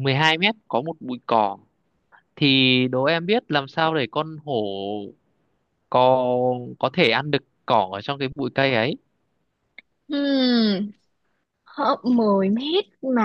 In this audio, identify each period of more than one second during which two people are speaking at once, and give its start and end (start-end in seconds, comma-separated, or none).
none